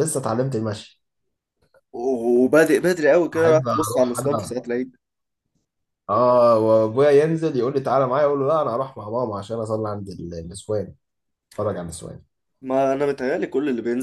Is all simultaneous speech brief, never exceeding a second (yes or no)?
no